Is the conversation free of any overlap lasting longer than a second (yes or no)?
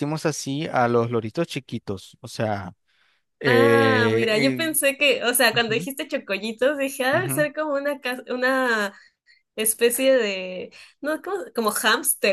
no